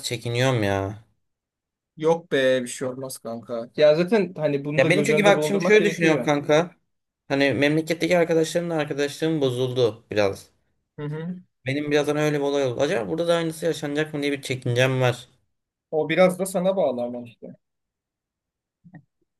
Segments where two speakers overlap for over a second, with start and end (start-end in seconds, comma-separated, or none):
4.8-6.3